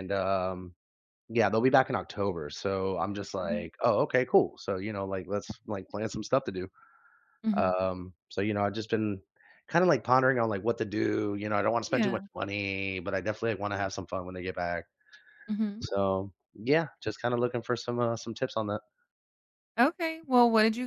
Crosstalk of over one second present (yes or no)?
no